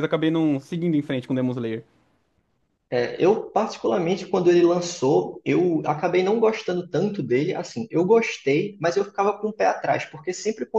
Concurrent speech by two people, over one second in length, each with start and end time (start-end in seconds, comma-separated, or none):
none